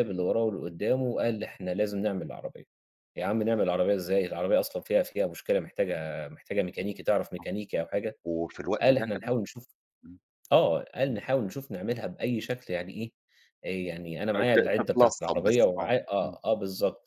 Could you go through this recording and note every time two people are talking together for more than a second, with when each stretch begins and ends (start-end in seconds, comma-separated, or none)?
14.3-16.4